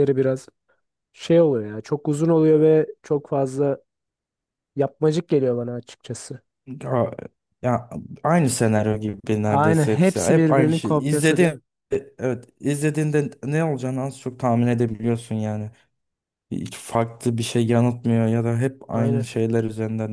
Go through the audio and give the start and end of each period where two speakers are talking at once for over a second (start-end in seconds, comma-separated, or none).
9.5-11.5